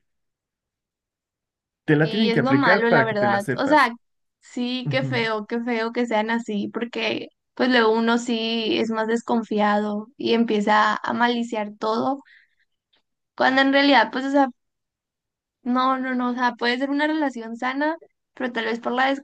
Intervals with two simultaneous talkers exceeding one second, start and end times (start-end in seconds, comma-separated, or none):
2.0-3.9